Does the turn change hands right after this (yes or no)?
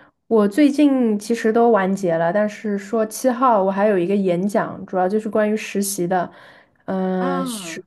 no